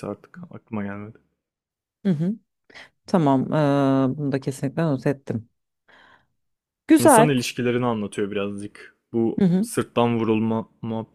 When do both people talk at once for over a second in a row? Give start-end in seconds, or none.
none